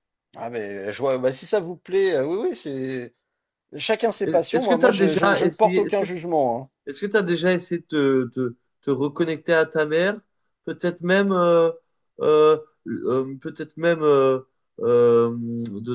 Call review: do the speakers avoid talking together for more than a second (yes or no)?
no